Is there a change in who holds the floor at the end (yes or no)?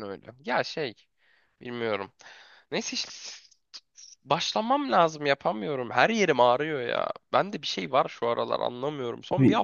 no